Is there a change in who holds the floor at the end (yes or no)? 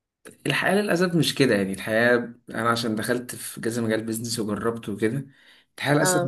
no